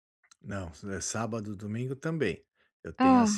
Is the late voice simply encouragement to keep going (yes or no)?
yes